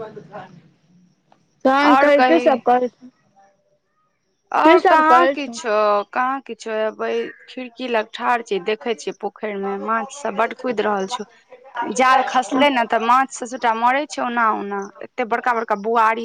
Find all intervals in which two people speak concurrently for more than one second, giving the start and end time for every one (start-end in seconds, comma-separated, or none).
none